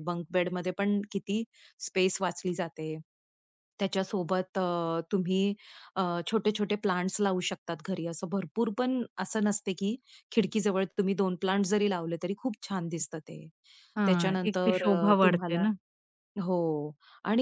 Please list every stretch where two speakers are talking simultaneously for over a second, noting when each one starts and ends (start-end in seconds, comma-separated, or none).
14.1-15.7